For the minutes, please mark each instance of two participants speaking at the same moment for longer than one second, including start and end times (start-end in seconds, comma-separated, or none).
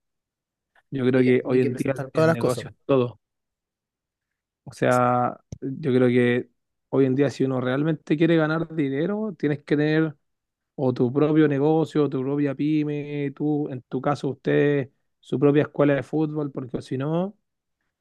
1.1-2.6